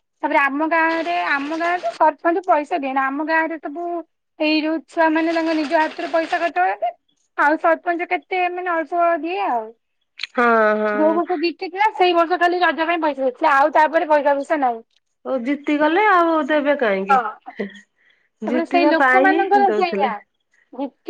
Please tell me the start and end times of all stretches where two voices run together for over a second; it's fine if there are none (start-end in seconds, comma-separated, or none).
18.5-20.1